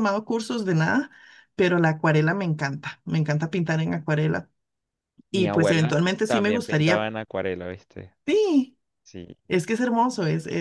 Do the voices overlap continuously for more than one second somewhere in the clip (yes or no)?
yes